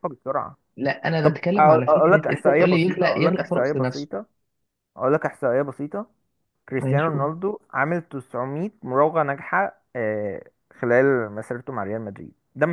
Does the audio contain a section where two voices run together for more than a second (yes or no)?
yes